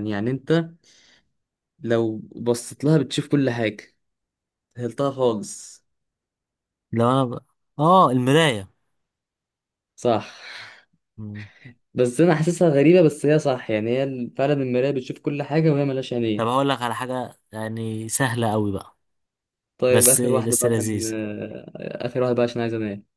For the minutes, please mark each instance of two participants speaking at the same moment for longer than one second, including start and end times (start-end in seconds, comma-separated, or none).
19.9-21.1